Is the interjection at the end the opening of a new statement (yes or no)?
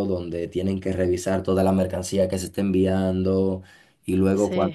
no